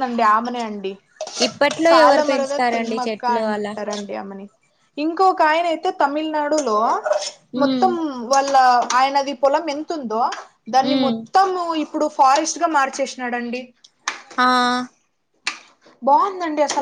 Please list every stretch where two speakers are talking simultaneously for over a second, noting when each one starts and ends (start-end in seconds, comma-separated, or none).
1.9-3.7